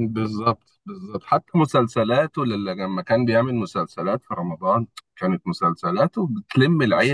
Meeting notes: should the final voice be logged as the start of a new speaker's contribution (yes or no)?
yes